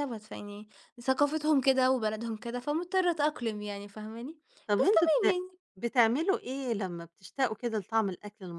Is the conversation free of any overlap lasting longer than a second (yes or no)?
yes